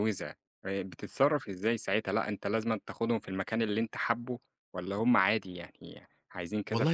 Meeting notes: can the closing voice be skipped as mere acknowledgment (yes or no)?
no